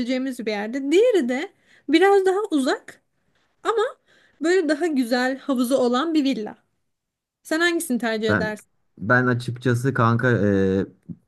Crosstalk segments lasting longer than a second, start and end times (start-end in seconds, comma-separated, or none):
none